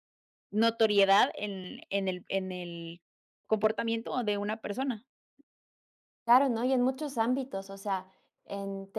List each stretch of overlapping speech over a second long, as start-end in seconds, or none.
none